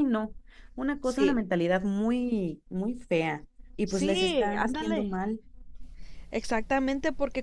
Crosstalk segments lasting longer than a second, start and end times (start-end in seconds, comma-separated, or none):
3.8-5.2